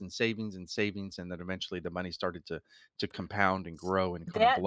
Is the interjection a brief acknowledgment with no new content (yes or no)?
no